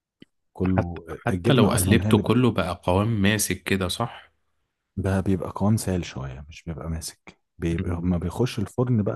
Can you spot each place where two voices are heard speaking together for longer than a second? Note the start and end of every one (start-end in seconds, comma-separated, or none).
0.6-2.2